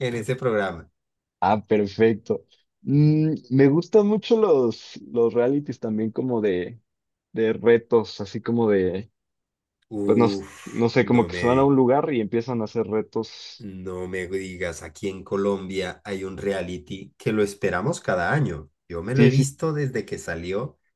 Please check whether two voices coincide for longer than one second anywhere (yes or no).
yes